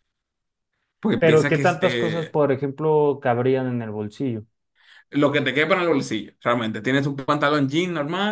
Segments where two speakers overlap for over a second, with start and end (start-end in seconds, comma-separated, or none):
1.2-2.4